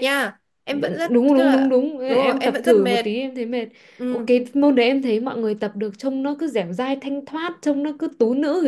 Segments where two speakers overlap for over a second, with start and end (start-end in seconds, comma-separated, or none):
0.7-3.0